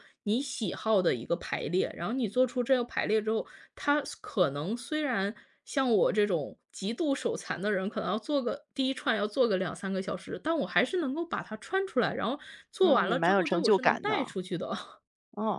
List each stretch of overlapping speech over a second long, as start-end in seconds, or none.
12.8-14.3